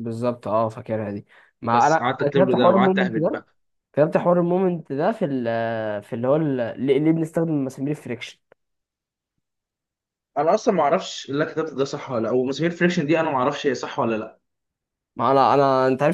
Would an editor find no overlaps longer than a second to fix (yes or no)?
no